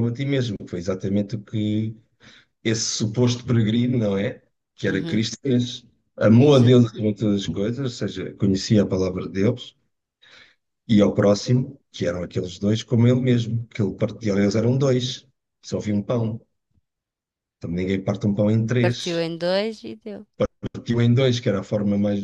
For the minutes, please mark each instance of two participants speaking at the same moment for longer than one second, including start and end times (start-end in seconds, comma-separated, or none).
none